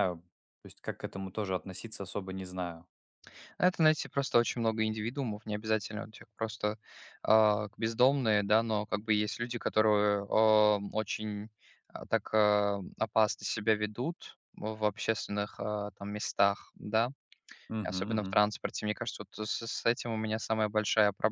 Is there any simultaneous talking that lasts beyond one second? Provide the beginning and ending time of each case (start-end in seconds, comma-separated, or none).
none